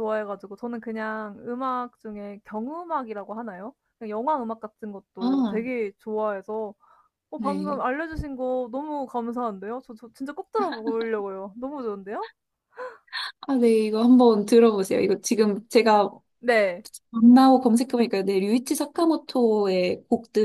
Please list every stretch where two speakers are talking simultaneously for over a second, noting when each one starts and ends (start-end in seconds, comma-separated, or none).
none